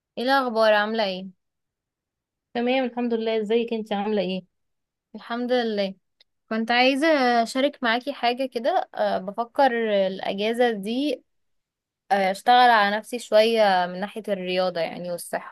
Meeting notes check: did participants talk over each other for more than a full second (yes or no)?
no